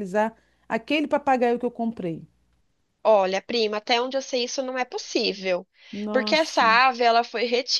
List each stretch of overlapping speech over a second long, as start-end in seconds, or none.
none